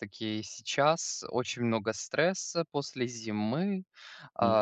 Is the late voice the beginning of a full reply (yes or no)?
no